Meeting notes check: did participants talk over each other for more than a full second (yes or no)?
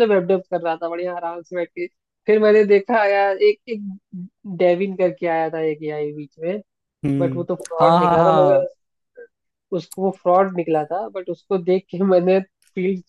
yes